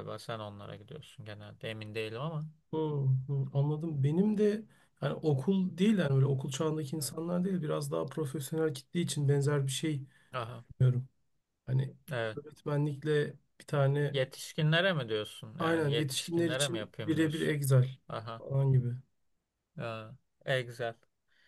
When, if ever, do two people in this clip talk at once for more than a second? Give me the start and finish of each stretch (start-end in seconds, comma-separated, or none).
15.6-17.5